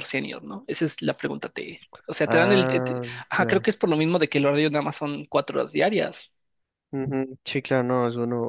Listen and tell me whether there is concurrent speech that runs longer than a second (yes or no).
yes